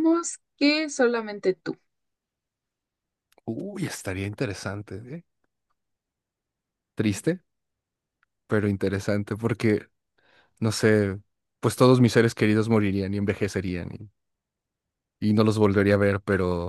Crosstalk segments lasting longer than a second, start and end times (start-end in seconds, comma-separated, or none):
none